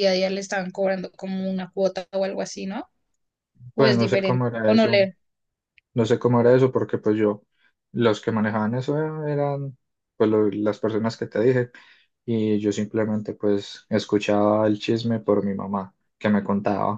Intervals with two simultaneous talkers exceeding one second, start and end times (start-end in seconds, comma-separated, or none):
3.8-5.1